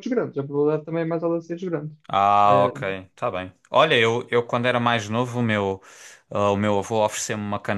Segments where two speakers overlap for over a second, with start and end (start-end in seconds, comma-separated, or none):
none